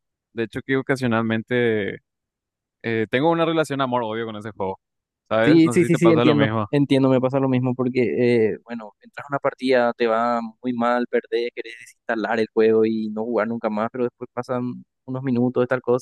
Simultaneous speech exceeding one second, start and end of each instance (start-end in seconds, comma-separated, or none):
5.4-6.7